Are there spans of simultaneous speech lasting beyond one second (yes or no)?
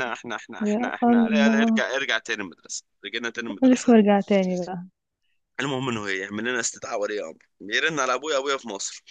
yes